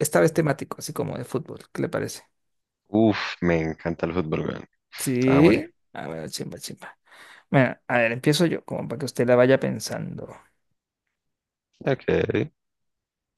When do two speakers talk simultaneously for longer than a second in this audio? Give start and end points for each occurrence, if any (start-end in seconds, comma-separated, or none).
none